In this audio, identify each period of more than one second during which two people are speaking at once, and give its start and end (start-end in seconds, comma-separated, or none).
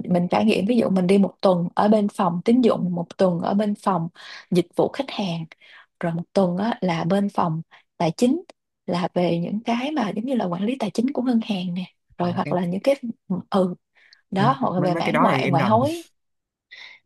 14.4-15.8